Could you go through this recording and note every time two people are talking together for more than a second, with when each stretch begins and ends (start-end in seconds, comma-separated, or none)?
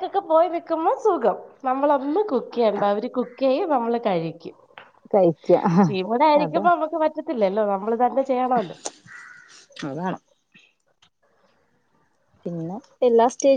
none